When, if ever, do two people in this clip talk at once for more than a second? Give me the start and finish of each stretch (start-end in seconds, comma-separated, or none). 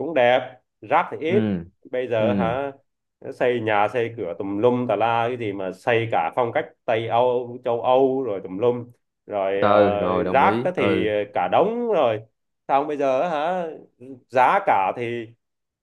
9.6-11.1